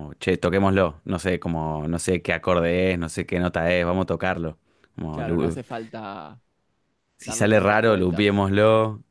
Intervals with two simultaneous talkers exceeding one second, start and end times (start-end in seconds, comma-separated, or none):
7.2-8.4